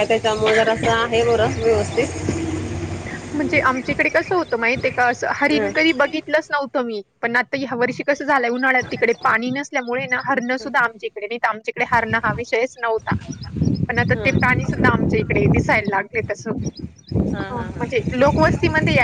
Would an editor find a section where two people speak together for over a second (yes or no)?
no